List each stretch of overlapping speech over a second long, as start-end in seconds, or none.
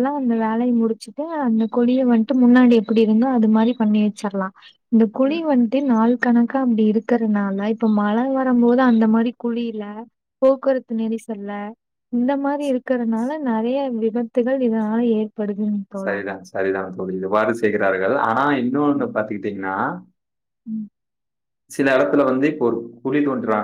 none